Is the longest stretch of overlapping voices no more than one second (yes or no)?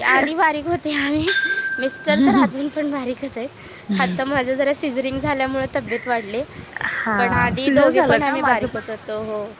no